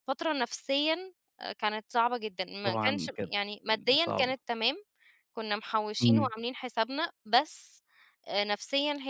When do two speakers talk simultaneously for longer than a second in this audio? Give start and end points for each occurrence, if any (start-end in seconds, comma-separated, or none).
2.6-4.3